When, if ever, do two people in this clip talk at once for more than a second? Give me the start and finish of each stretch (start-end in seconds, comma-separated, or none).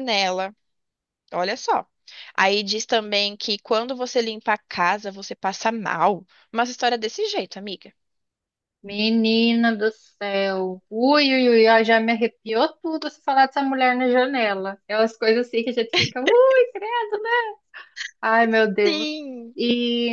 none